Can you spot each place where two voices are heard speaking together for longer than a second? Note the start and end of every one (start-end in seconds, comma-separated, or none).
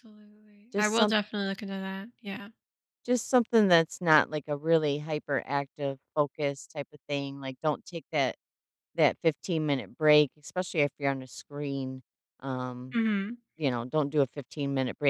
none